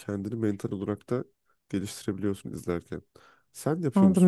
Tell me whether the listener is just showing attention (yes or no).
no